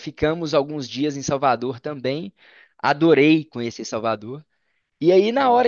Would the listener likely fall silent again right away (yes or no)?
yes